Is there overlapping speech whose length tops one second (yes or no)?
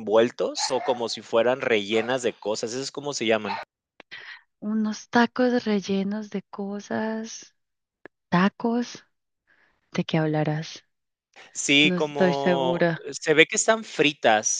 yes